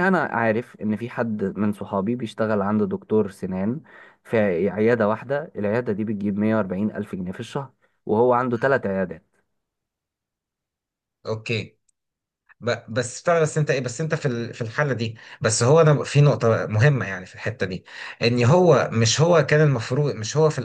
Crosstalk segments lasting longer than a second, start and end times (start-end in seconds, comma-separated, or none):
none